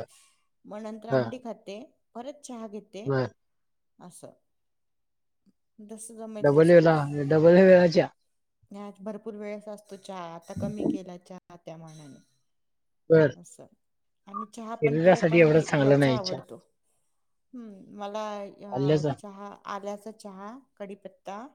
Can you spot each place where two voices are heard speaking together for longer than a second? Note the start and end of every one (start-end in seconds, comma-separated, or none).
14.8-16.4